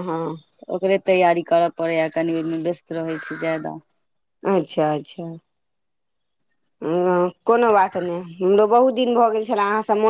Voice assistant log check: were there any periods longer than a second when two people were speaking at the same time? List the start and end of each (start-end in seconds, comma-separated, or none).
none